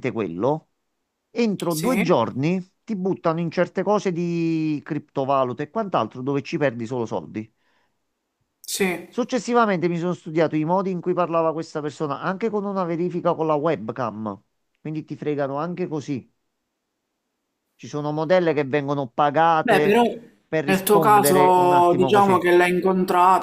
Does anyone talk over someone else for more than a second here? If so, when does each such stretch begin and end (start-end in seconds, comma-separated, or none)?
20.6-22.4